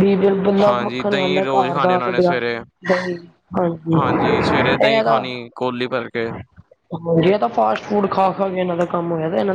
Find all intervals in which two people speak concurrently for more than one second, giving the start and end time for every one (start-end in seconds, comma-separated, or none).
0.7-2.3